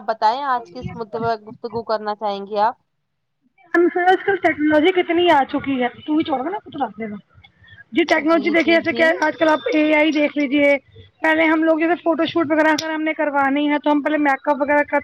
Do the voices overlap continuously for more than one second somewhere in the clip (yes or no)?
no